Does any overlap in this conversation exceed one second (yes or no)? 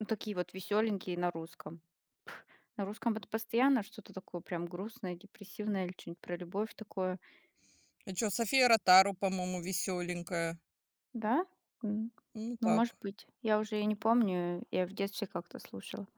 no